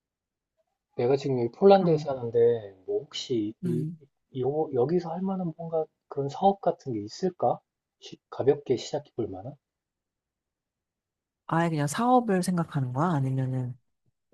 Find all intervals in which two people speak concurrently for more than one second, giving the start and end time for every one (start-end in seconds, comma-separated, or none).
none